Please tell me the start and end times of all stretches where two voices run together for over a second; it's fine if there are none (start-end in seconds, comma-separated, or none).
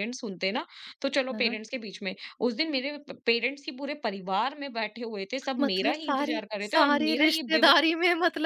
5.6-7.8